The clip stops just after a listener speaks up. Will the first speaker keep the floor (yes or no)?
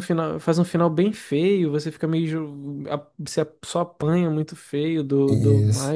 no